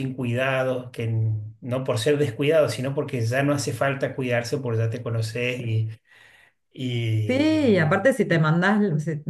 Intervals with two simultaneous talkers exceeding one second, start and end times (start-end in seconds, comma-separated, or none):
none